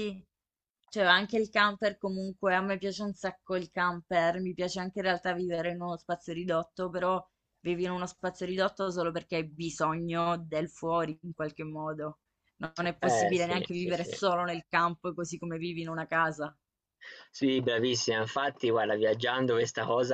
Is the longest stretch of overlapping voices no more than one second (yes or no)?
no